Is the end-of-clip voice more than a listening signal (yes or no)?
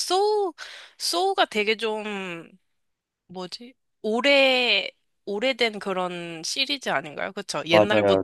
yes